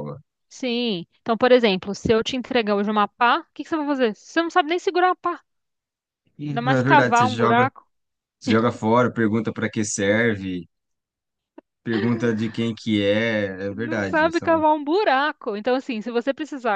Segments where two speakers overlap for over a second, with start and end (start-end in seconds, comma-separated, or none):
6.5-7.7